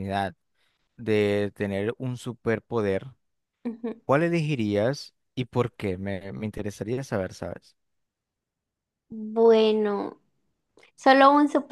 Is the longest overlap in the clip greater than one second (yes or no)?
no